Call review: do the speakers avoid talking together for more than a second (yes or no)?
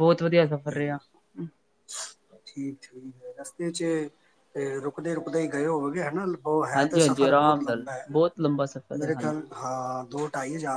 no